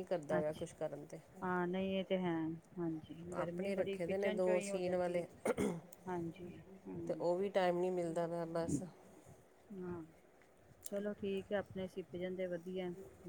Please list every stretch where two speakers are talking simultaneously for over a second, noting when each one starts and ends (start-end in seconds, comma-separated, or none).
3.4-5.6